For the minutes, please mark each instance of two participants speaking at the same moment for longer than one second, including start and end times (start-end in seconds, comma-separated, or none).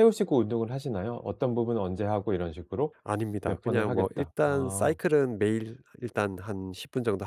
3.4-5.0